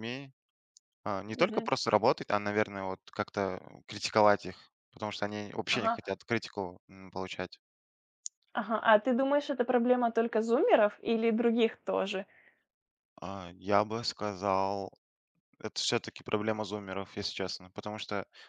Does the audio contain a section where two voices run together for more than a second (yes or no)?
no